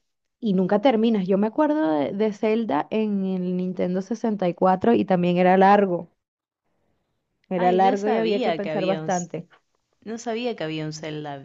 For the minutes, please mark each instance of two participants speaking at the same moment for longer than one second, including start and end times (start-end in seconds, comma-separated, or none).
7.6-9.3